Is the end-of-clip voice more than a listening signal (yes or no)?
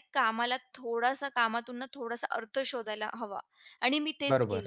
yes